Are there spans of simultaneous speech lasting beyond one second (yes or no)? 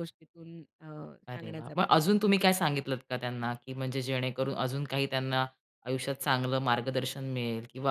yes